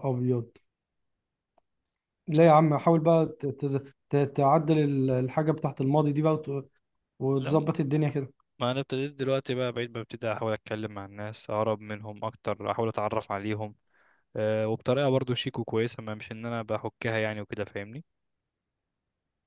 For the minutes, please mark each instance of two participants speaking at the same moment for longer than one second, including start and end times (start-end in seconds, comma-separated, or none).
none